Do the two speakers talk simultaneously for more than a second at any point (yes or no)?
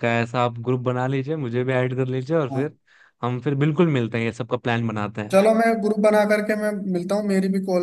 no